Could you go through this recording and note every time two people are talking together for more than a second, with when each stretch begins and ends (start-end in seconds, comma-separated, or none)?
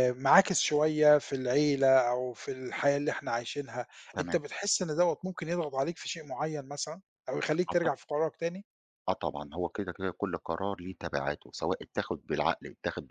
none